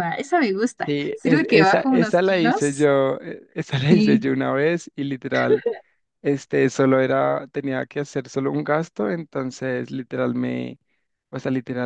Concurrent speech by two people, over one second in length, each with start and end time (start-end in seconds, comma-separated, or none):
0.8-2.9